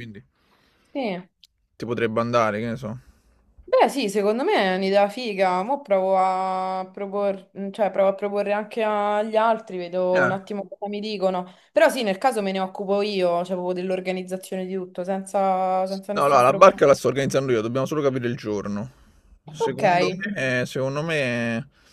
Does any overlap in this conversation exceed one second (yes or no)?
no